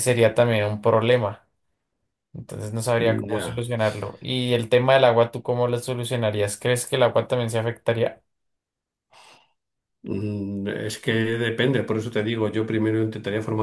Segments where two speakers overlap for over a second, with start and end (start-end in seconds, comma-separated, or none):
none